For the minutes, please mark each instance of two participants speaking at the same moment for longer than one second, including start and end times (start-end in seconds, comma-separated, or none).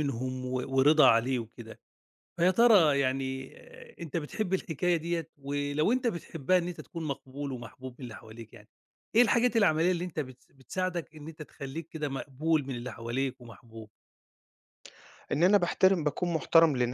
none